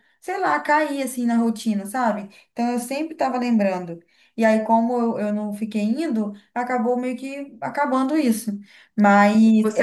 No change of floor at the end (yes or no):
no